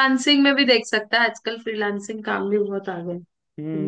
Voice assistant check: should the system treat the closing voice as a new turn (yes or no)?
yes